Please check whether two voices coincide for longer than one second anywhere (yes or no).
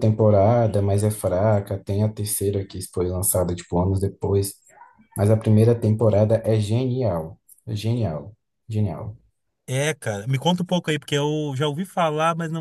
no